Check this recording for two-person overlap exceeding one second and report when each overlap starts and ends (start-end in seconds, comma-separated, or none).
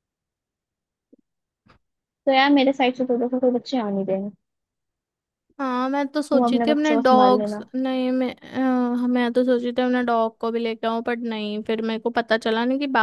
6.3-7.6